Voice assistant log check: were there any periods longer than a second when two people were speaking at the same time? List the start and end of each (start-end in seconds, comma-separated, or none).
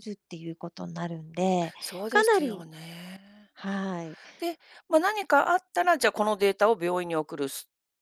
none